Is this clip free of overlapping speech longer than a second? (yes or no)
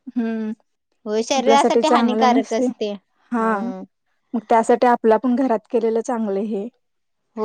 no